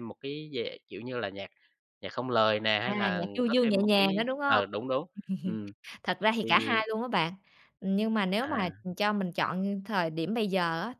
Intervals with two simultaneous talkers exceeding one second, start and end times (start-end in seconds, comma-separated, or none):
2.8-4.7